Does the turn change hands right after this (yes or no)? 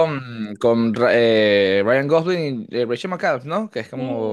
yes